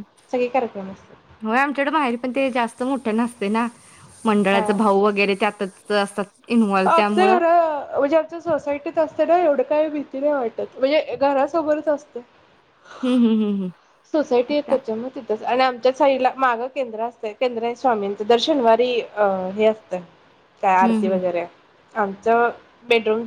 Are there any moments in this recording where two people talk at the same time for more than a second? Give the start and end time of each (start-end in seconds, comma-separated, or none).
none